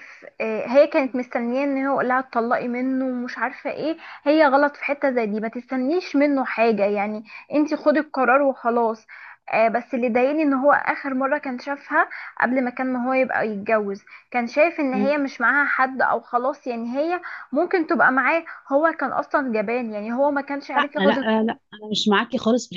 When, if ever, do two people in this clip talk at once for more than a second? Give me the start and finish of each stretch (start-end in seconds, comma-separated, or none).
none